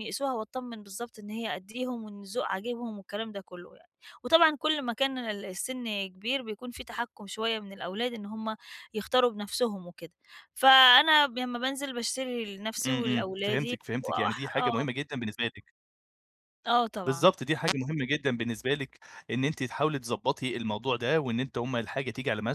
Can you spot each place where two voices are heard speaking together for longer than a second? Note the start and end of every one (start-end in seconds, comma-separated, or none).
12.8-15.0